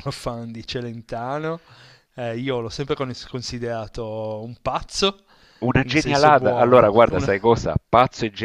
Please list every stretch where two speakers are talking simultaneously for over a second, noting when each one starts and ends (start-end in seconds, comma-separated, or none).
5.8-7.3